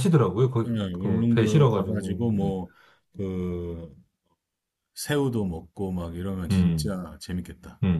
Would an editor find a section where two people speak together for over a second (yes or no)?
yes